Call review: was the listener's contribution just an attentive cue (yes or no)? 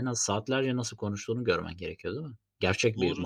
no